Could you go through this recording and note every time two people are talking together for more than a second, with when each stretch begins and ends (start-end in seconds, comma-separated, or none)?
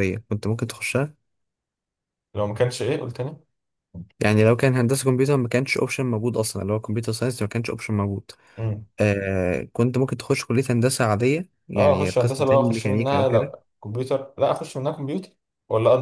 11.8-13.5